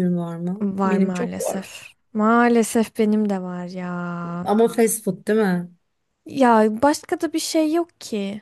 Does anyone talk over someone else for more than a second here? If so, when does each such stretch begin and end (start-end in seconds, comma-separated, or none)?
0.6-2.0